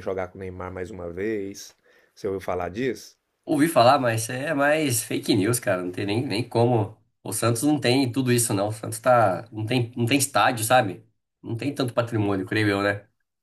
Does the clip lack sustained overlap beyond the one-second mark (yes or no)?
yes